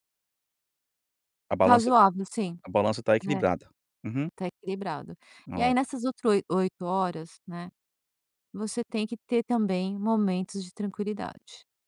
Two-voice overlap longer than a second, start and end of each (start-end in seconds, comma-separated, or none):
none